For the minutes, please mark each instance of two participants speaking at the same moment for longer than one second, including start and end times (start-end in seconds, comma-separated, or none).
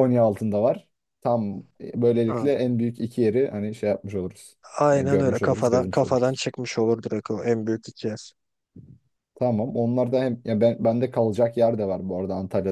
4.9-6.4